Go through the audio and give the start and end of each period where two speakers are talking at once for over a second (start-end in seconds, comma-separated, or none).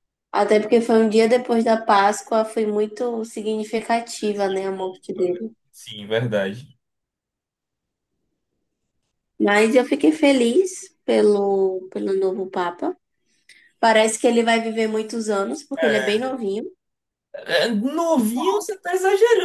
4.3-5.5